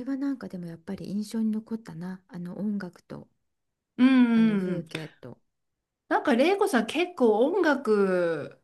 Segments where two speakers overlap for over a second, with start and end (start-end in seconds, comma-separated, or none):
none